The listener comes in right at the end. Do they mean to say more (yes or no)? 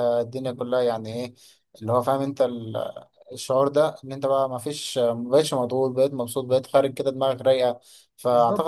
no